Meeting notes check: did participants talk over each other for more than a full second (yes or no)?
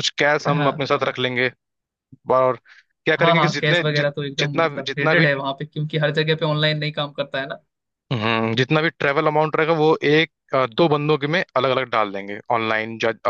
yes